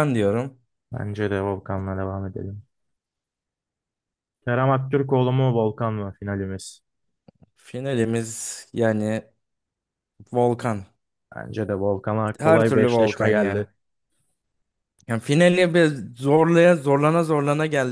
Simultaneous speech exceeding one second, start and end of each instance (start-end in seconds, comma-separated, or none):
12.4-13.6